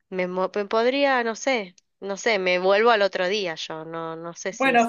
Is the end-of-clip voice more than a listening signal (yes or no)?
yes